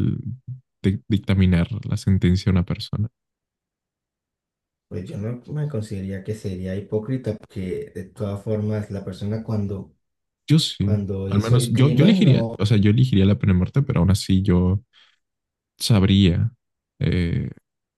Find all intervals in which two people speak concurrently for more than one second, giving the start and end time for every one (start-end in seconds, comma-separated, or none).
10.8-12.7